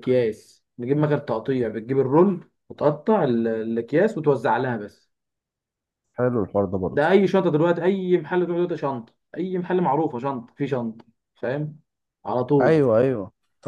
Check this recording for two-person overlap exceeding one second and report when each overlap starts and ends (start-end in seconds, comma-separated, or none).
none